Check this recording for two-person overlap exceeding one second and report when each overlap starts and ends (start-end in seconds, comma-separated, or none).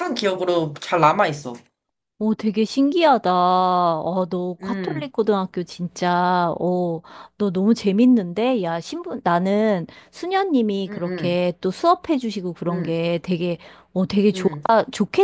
none